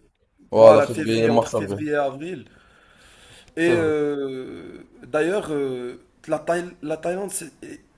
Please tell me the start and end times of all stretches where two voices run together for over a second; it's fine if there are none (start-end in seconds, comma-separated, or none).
0.5-1.8